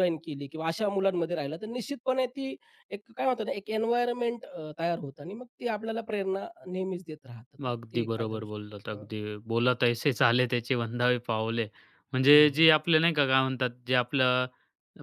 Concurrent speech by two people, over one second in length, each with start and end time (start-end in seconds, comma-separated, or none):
7.7-9.1